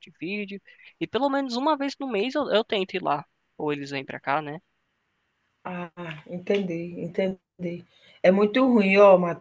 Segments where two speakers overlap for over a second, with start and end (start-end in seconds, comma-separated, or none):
none